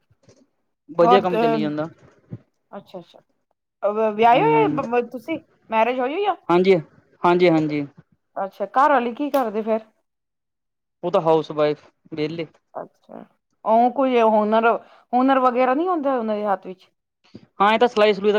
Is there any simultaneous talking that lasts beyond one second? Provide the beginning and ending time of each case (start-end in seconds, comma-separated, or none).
none